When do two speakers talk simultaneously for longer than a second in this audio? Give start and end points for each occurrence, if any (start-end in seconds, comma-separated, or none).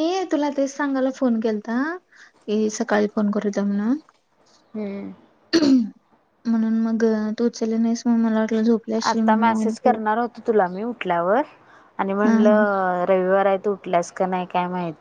none